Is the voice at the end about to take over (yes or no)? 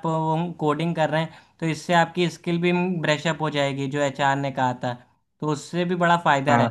no